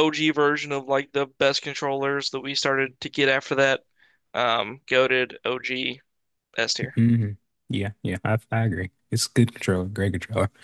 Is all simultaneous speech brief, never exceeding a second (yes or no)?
yes